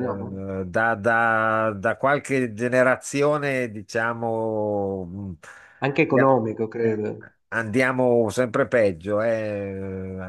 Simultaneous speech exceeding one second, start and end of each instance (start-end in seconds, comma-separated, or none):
none